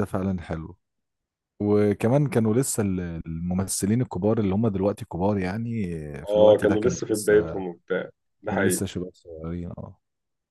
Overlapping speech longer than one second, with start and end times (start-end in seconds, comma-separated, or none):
6.3-7.6